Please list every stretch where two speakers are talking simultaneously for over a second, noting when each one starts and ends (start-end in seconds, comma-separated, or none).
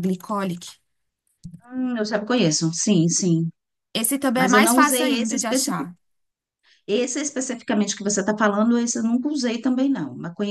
4.3-5.9